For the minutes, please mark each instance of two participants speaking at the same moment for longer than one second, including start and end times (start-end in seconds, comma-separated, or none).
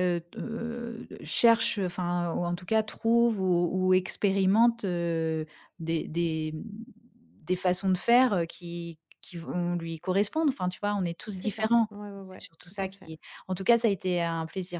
11.3-13.1